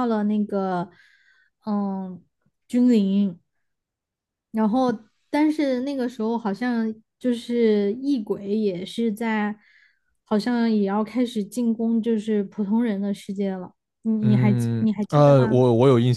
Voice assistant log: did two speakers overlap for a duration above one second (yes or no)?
yes